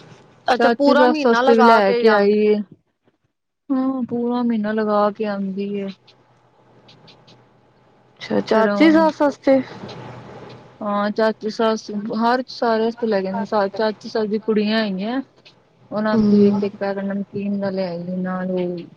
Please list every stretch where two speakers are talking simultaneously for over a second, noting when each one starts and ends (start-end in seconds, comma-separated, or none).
0.6-2.3